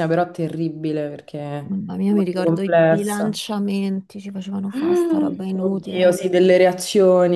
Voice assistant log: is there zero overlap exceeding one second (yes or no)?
no